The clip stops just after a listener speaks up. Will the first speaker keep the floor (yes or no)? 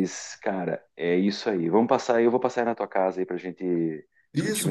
no